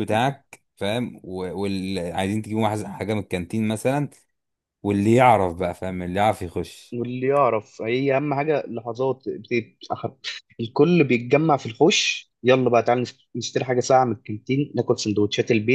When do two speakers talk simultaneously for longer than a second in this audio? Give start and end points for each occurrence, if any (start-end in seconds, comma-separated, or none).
none